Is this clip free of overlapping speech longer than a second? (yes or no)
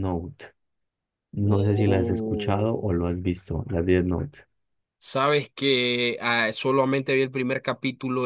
no